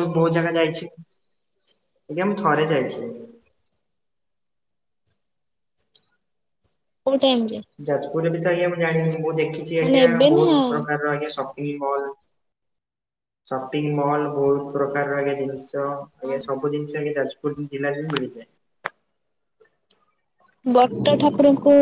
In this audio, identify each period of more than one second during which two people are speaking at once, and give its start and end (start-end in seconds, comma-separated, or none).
none